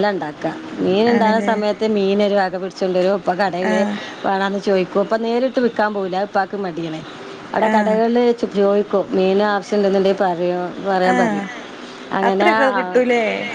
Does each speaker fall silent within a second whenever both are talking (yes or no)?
yes